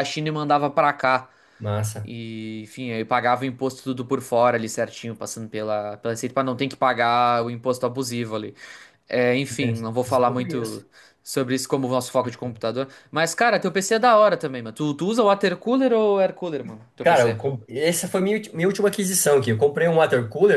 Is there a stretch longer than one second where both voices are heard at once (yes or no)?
yes